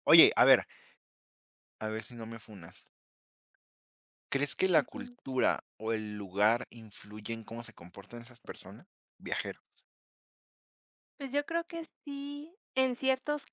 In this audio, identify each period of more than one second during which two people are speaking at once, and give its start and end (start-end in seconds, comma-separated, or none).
none